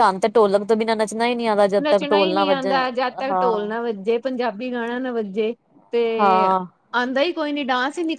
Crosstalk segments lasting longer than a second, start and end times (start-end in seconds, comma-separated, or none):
none